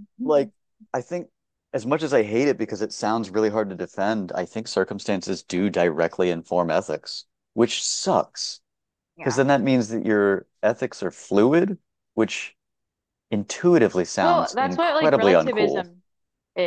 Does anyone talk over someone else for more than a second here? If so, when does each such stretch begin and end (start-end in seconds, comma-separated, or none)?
14.2-15.8